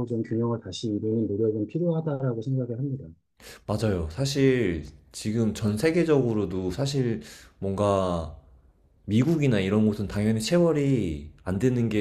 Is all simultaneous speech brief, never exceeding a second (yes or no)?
yes